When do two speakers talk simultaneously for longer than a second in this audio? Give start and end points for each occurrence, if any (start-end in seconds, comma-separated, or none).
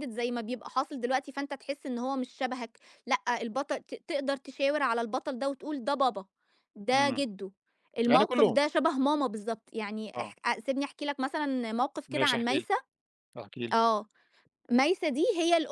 none